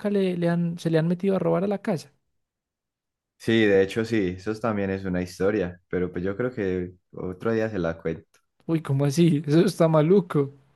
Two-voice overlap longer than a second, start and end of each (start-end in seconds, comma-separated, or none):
none